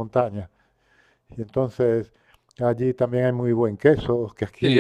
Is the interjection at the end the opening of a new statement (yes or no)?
yes